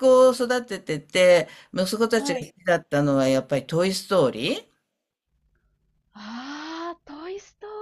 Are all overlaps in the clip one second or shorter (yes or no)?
yes